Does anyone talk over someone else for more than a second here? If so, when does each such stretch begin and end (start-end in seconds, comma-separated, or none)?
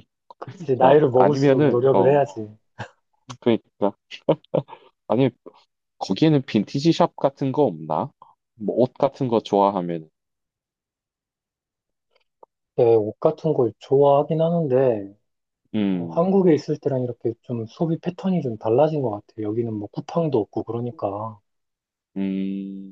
0.8-2.2